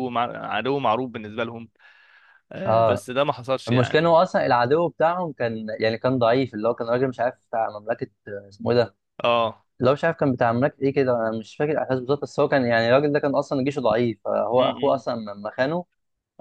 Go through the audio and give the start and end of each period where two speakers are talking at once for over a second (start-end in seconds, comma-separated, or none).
none